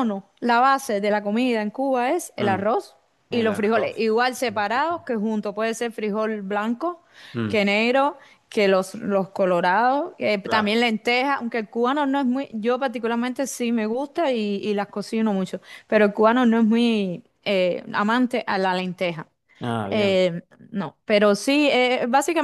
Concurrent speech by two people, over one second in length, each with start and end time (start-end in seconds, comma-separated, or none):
3.3-4.7